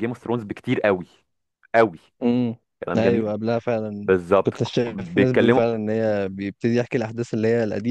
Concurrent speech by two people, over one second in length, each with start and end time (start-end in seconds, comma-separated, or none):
4.0-5.6